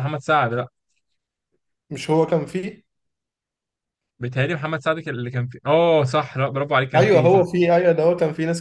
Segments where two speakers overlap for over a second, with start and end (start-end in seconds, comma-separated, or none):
none